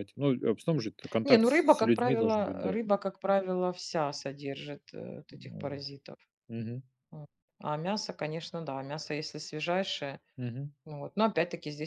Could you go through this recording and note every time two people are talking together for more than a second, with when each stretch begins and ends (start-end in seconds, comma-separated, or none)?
1.2-2.8